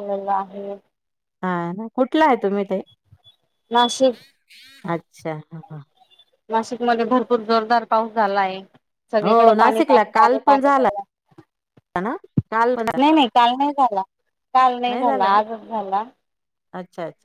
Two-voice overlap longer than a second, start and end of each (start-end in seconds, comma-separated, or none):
9.2-10.9